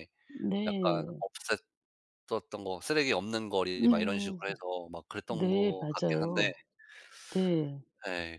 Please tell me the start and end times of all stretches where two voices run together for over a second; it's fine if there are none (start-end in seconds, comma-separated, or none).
5.3-6.5